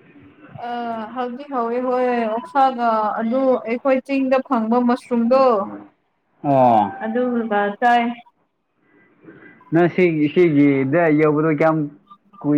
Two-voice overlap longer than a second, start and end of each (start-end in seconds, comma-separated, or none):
none